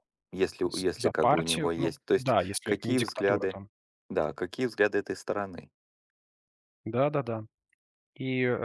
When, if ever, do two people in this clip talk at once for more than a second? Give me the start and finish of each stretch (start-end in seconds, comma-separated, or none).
0.6-3.6